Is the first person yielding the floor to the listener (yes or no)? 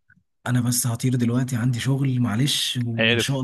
no